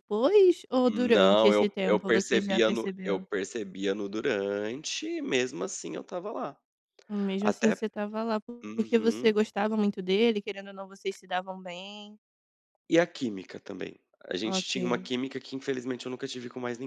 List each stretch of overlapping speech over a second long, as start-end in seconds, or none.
0.9-3.2